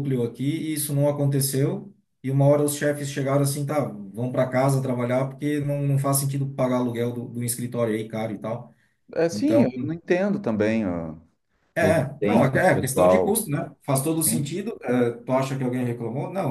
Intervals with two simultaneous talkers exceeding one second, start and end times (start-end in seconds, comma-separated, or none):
11.8-13.5